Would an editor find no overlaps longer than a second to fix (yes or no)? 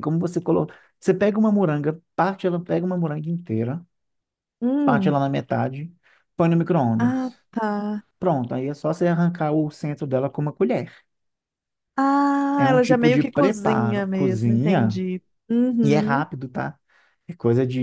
no